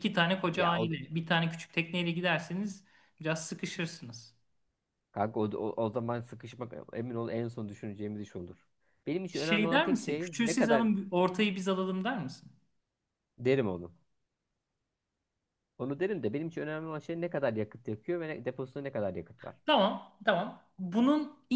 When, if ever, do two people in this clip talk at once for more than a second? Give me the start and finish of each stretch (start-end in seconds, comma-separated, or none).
9.3-10.8